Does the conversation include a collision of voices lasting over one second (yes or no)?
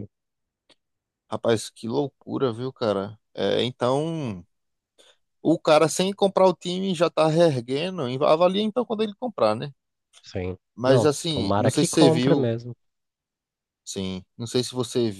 yes